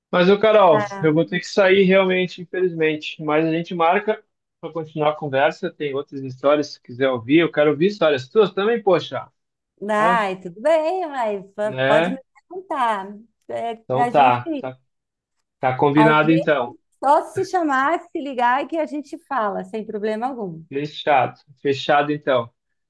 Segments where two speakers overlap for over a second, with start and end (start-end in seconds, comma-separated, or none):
none